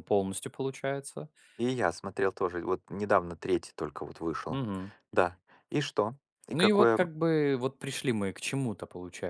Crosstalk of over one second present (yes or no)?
no